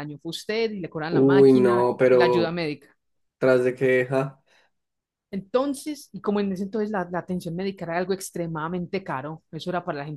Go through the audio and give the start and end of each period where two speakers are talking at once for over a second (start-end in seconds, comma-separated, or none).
1.1-2.6